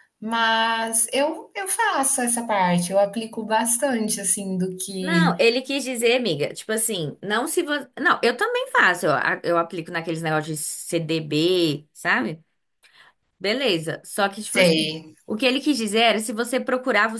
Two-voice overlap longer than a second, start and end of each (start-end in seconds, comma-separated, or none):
none